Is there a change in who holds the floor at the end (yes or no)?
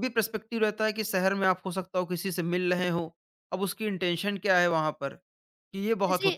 yes